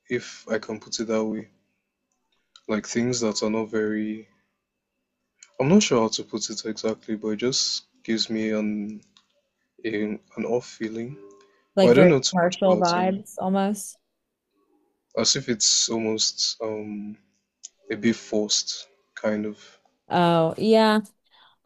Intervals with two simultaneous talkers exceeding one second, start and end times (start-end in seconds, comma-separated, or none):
11.8-13.2